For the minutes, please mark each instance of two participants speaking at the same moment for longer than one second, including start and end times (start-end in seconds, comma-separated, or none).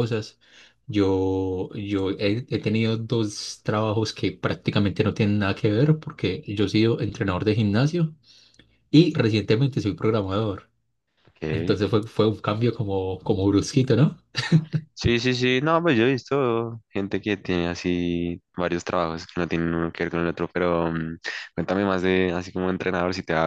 none